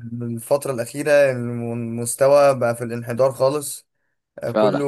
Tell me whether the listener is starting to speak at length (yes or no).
no